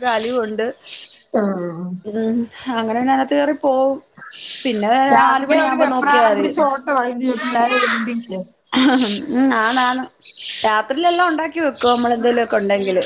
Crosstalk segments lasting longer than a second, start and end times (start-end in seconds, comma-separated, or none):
none